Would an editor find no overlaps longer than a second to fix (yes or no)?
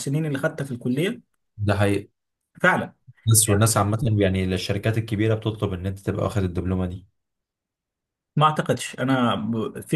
yes